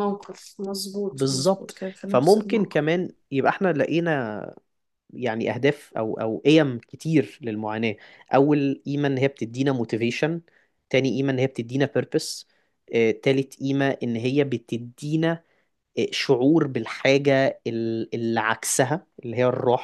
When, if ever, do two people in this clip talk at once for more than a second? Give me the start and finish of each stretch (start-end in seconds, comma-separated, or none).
1.1-2.8